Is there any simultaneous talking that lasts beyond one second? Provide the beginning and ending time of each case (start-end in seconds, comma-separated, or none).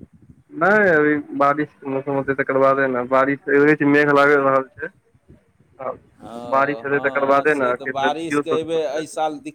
6.5-9.0